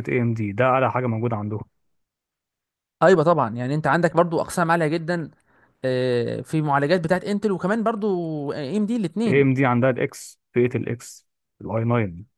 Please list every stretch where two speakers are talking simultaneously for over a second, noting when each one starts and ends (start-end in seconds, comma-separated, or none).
none